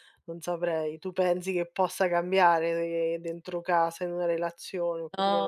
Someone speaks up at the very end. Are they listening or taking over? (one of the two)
taking over